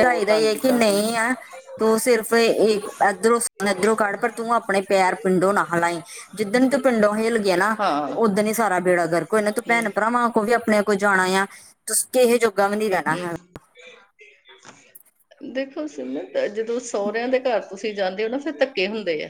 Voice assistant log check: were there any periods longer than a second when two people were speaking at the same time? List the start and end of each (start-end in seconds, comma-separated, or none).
none